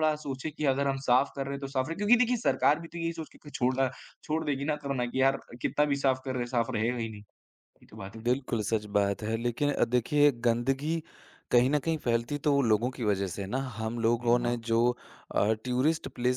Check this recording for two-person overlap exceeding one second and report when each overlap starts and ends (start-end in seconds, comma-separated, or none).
none